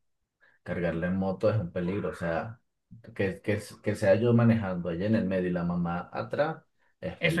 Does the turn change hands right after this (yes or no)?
yes